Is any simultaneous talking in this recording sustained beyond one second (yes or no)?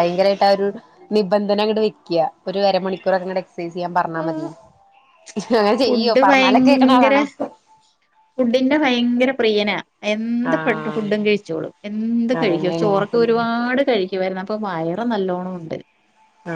yes